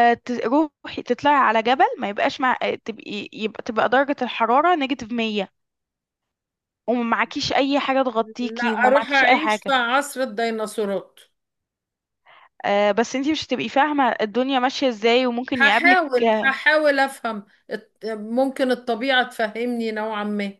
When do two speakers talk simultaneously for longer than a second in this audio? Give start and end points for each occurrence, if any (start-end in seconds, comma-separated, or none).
8.4-9.7